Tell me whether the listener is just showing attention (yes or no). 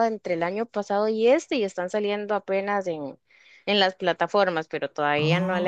yes